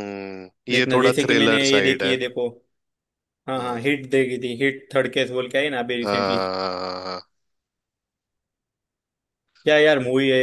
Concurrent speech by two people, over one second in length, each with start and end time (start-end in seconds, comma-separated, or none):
0.7-2.2